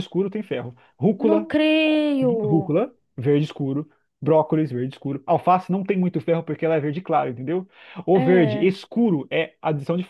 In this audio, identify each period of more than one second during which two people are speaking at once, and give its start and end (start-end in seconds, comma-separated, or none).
none